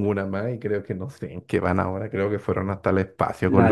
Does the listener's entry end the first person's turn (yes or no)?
yes